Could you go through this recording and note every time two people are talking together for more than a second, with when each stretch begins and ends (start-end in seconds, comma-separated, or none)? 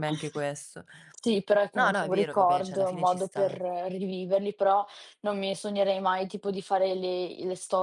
1.7-3.6